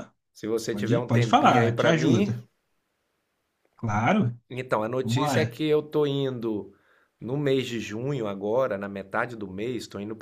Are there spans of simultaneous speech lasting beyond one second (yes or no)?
yes